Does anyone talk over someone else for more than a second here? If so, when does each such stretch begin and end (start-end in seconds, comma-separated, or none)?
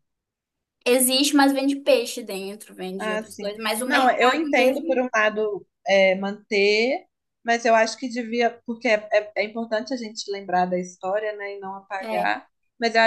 3.0-5.0